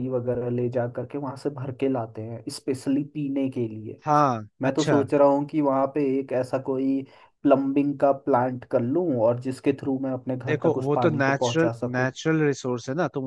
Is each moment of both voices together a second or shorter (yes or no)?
no